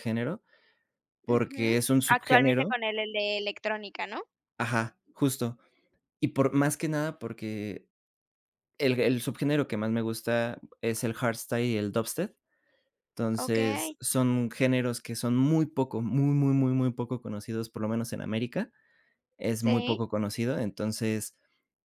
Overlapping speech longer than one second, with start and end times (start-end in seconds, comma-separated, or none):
1.3-2.8